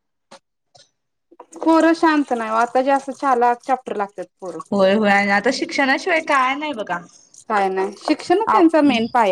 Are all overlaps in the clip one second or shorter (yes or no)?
yes